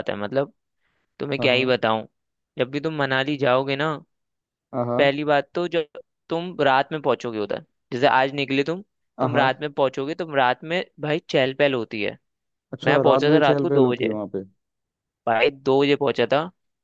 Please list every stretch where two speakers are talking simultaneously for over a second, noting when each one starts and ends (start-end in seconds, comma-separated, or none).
12.8-14.1